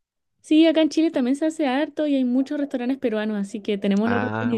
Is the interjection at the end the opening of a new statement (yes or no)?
yes